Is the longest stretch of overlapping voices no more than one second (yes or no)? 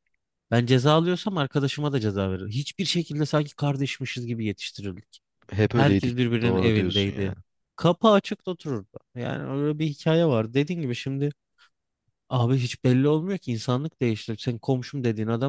no